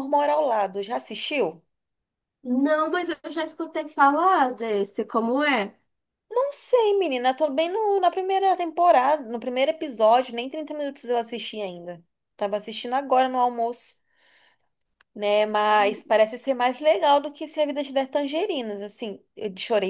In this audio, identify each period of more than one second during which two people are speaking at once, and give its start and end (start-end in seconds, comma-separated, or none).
none